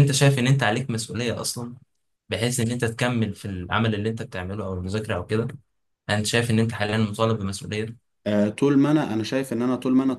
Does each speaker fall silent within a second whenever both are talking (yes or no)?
yes